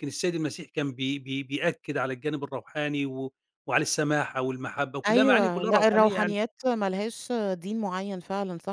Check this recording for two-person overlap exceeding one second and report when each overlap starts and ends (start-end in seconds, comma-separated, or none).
5.1-6.4